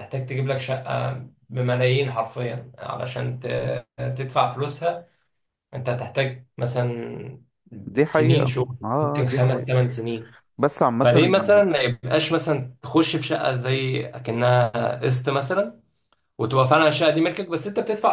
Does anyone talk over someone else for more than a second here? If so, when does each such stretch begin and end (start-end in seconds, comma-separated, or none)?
8.0-9.7